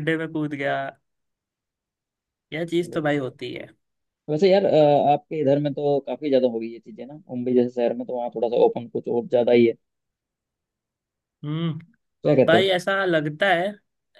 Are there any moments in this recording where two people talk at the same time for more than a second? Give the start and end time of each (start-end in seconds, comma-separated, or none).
none